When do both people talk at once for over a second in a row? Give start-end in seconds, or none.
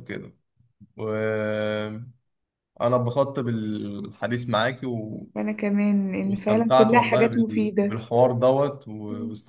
6.2-8.0